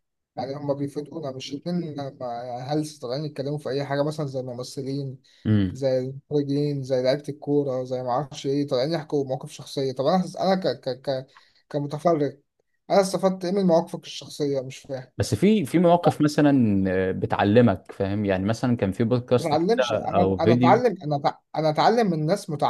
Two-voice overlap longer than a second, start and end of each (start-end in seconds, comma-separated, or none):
19.4-20.8